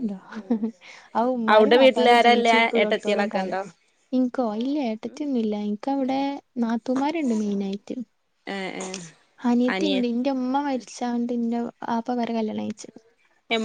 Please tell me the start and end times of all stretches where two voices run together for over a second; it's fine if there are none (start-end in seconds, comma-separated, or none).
1.5-3.6